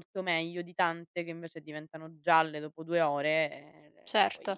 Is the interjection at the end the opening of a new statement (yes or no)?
yes